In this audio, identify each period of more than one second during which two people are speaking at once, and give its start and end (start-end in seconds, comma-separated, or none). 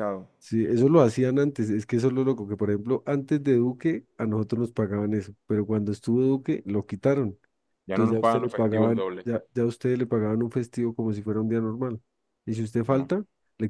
7.9-9.2